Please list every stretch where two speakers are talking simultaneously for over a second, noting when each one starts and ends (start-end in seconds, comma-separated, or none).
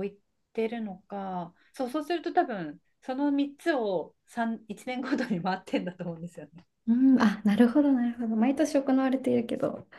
none